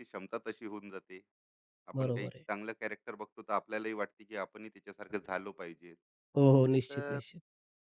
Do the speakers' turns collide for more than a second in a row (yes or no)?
no